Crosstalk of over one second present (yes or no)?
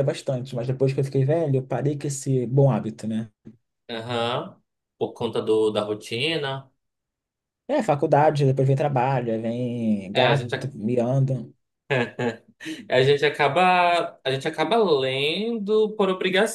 no